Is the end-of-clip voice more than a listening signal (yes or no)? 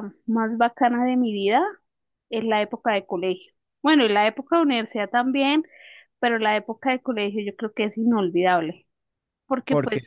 no